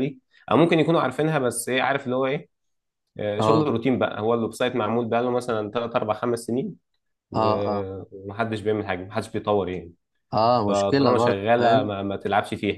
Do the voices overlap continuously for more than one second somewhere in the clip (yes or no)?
yes